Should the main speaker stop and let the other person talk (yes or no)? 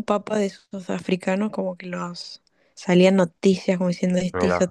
yes